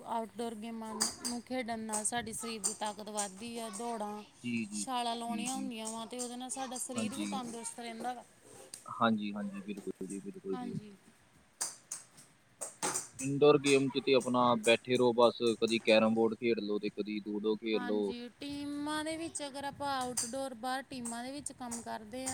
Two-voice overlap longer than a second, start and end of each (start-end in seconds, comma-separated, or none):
none